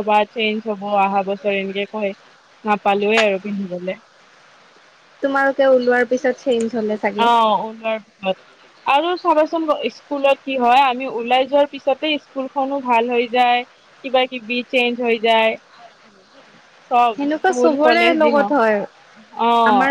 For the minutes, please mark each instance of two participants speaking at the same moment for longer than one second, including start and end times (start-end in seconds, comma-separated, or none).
17.1-18.8